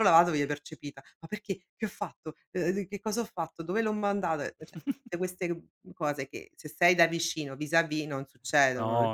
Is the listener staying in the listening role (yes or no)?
no